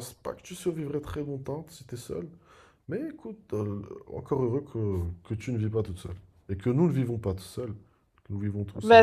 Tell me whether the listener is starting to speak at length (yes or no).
yes